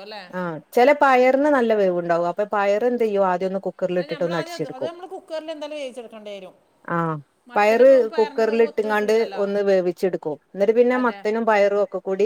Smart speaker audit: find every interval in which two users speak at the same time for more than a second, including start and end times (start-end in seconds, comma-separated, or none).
7.6-9.4